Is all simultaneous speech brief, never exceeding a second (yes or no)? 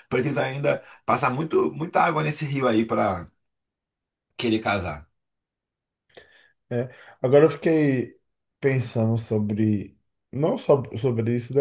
yes